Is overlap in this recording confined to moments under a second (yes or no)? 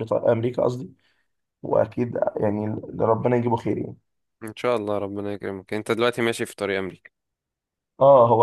yes